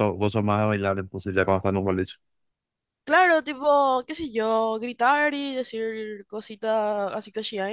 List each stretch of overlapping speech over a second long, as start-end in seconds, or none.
none